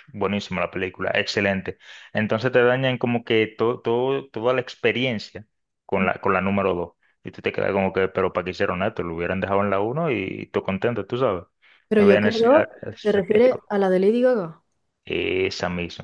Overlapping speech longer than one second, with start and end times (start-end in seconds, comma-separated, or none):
12.0-13.7